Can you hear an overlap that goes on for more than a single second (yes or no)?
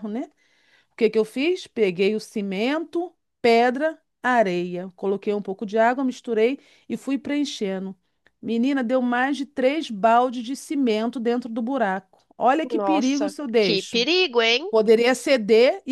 yes